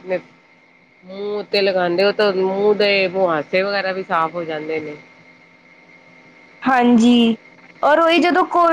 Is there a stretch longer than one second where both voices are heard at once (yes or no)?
no